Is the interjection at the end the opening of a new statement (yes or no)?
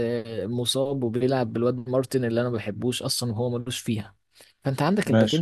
no